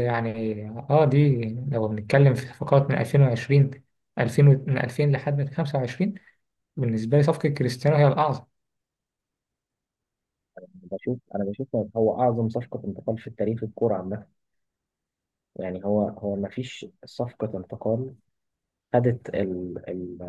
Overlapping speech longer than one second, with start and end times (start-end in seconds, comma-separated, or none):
none